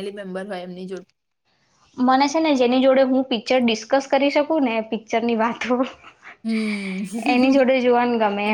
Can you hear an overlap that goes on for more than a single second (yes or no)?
no